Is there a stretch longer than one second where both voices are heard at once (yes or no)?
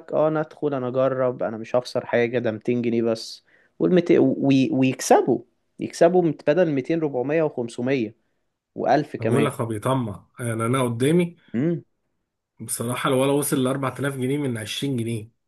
no